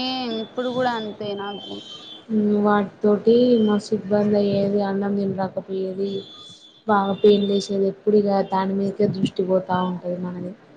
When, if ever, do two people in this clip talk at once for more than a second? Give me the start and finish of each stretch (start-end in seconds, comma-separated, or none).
none